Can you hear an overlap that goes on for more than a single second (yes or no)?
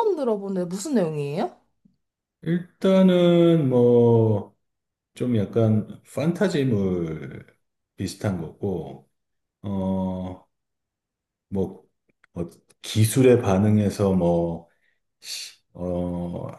no